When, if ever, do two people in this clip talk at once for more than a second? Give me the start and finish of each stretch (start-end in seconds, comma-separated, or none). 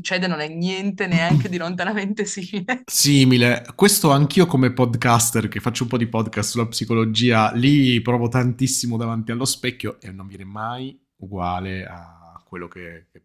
none